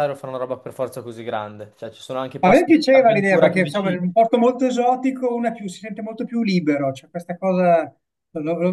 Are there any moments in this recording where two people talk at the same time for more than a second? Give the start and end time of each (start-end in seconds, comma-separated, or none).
2.4-4.0